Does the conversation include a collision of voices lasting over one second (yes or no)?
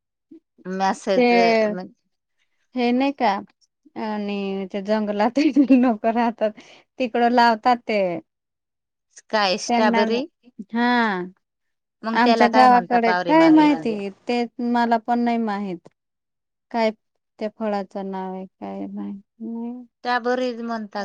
yes